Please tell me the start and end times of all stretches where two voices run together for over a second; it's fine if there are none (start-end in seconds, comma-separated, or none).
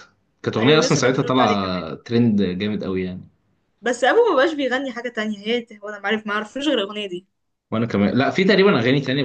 0.6-1.8